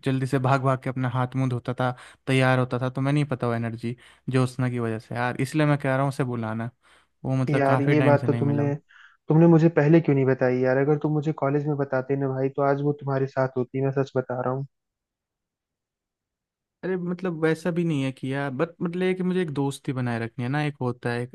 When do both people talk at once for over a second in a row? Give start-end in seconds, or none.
7.5-8.7